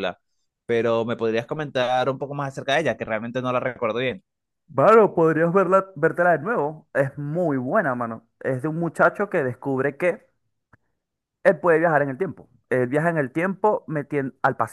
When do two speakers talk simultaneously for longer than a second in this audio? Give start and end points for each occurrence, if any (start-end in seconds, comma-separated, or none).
none